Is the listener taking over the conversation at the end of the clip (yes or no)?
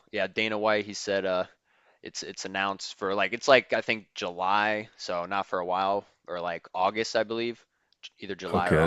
yes